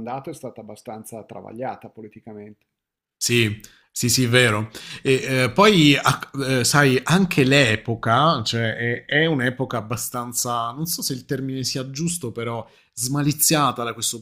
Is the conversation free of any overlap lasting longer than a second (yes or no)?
yes